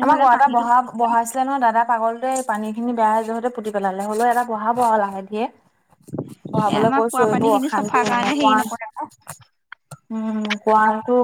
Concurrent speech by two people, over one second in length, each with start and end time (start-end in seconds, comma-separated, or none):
6.7-8.6